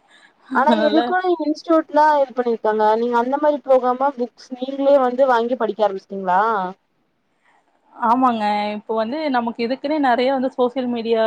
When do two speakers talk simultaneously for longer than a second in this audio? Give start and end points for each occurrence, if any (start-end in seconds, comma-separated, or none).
none